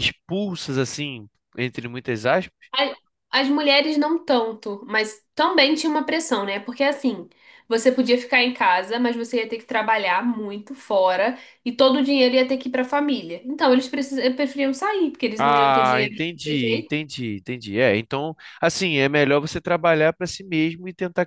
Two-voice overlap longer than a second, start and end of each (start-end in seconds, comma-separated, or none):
15.4-16.9